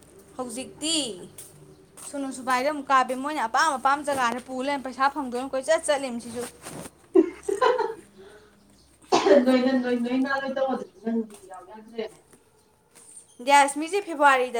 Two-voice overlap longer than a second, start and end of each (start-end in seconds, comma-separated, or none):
none